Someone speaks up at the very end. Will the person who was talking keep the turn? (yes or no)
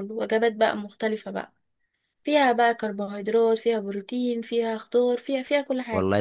no